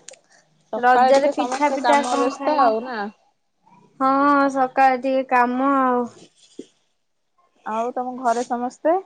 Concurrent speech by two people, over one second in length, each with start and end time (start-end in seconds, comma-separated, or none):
0.8-3.0